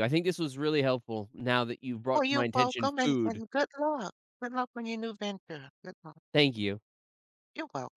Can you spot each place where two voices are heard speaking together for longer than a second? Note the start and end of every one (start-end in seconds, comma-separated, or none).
2.1-3.4